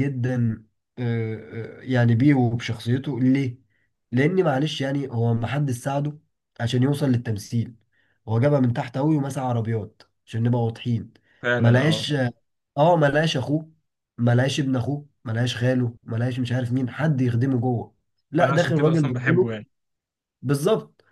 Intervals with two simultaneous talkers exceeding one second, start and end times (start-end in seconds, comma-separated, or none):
18.4-19.6